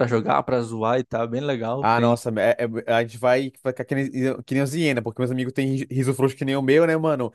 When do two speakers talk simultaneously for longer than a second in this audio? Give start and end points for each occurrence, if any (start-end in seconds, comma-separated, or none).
none